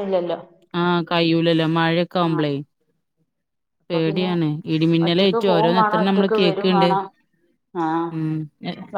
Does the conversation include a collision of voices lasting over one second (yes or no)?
yes